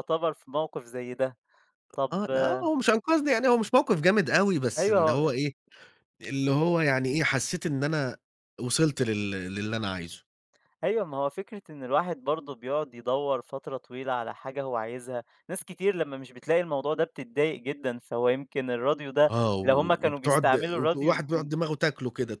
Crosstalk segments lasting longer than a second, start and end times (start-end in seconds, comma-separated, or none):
19.3-21.5